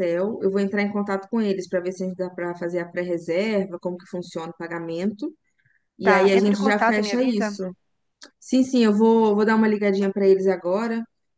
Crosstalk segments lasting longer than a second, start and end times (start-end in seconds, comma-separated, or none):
6.0-7.6